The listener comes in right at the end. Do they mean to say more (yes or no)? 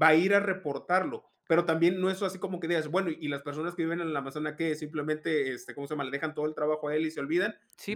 yes